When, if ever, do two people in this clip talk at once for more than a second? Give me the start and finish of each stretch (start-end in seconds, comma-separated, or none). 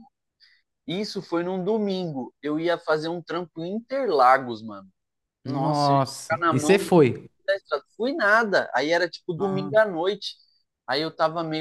5.5-6.8